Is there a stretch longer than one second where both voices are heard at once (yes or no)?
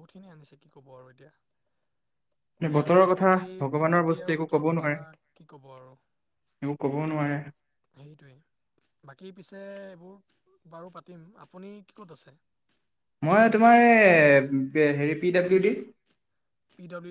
yes